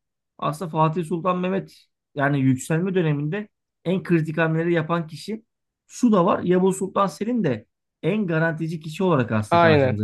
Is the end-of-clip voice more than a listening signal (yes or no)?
no